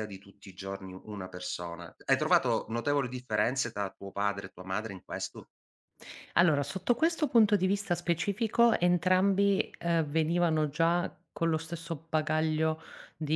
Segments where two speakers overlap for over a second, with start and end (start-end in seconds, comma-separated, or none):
none